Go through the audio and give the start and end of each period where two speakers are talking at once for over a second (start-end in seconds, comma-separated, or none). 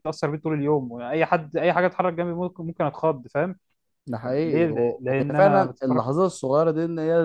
4.2-6.1